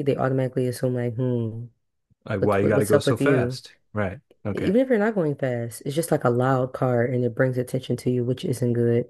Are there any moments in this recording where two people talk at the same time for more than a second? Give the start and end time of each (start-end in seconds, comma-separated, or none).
2.4-3.6